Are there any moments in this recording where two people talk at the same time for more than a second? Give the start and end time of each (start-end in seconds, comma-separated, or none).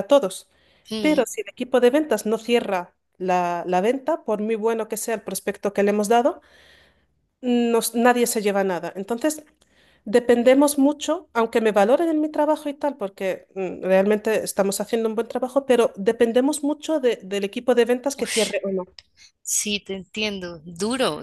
none